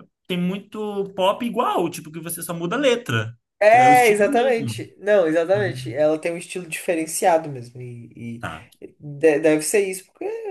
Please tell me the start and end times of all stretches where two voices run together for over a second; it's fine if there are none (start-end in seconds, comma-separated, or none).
3.6-4.9